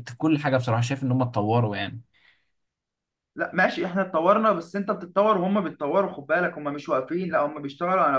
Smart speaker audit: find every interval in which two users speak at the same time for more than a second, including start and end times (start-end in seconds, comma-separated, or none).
none